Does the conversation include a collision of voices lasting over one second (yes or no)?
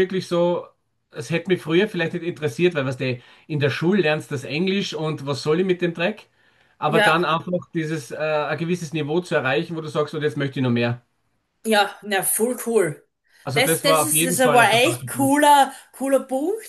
yes